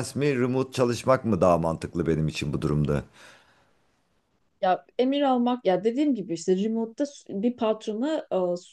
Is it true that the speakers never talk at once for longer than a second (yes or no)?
yes